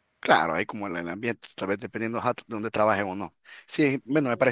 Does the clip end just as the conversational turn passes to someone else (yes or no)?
no